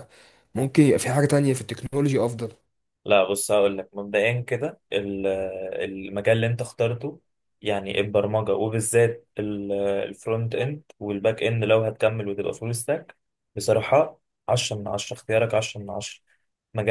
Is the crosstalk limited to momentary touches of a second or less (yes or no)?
yes